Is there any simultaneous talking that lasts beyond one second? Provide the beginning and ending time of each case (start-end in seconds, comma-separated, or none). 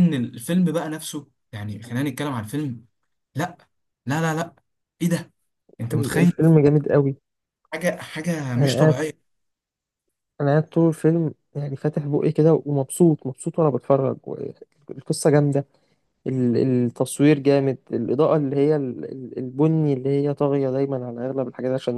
none